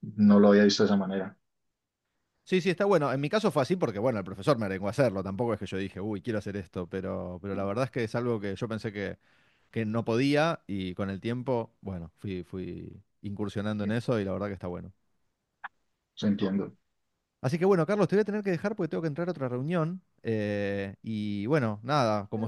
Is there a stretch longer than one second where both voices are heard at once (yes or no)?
no